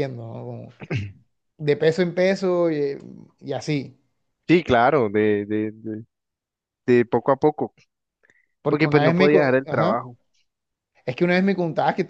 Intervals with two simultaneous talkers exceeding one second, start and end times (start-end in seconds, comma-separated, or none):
8.7-10.1